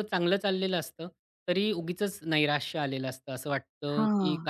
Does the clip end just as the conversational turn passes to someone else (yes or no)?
no